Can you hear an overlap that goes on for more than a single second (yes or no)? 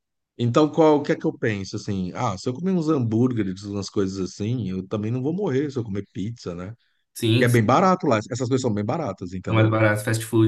no